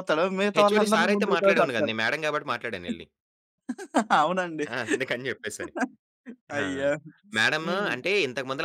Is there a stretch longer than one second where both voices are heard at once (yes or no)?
yes